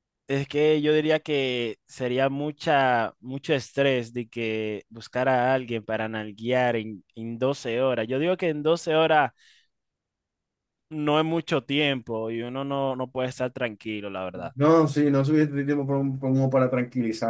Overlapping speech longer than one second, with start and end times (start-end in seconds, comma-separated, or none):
none